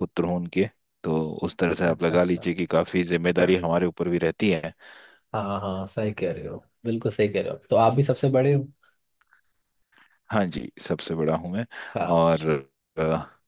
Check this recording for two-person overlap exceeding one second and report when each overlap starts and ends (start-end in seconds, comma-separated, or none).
none